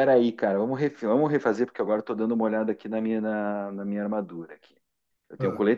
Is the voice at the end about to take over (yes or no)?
no